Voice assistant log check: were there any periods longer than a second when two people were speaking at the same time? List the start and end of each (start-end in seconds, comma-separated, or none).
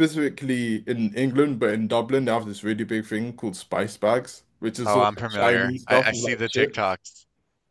4.8-7.0